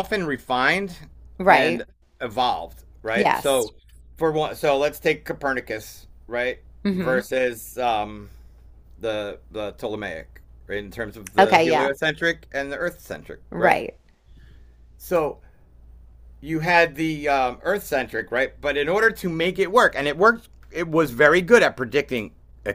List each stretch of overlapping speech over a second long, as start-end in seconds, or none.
none